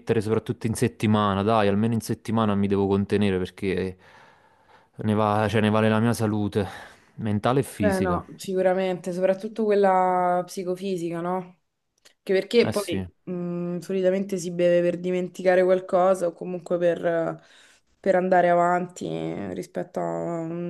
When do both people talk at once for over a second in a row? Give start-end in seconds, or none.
none